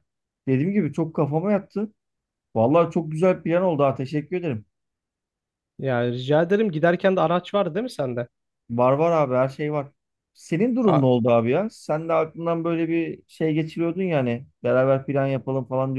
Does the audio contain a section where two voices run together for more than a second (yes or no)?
no